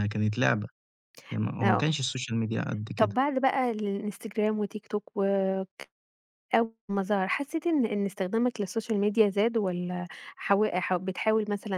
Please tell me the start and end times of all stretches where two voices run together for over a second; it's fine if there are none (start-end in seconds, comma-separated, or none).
none